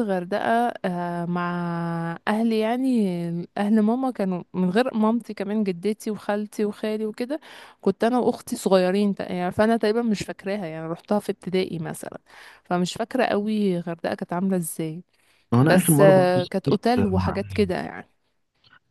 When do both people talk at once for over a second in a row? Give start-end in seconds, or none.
15.6-17.3